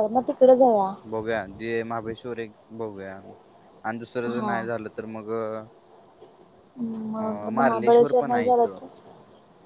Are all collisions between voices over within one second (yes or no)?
no